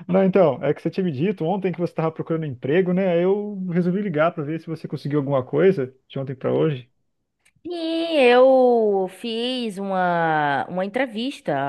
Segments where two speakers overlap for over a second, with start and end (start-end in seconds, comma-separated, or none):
none